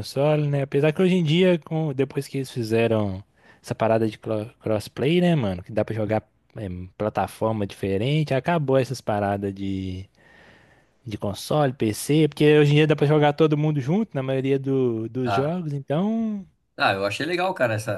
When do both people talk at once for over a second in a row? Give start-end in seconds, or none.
none